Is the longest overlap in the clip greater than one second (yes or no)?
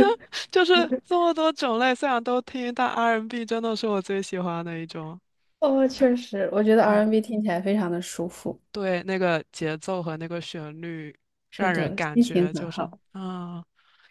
yes